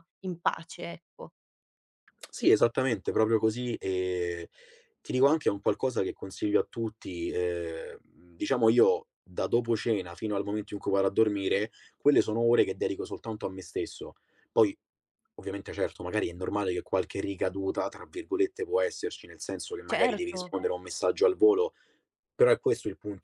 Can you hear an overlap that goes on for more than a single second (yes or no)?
no